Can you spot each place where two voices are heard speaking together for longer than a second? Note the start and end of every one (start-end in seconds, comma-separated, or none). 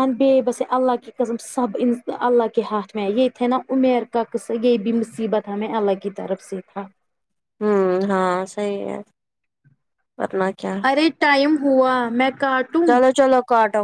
none